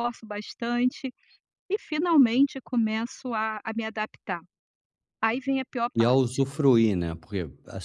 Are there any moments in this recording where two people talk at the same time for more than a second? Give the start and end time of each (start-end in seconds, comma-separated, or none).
none